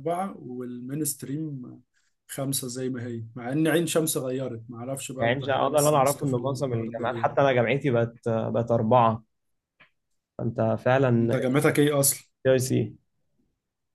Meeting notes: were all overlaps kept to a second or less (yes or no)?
no